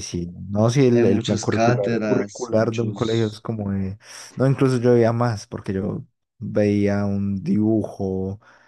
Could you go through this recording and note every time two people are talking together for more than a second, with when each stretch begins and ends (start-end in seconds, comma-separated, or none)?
0.9-3.5